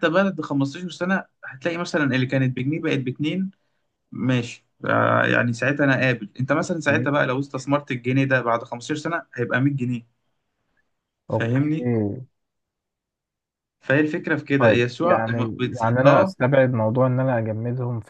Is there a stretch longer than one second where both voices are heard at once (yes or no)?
yes